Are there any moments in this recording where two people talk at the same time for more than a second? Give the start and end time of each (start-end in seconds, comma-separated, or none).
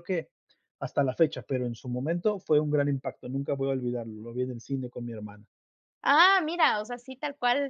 none